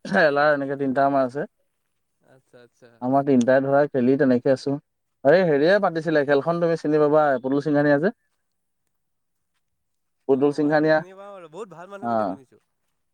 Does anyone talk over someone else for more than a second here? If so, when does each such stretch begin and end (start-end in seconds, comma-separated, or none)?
10.4-12.3